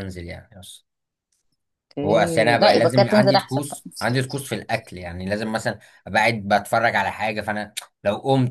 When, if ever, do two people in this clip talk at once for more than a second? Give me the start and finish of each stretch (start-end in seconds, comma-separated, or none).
2.0-3.8